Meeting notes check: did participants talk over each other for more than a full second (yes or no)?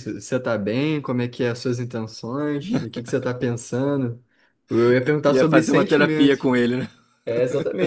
yes